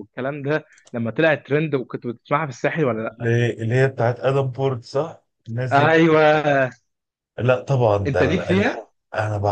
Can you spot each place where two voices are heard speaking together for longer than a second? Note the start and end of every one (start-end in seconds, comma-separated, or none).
none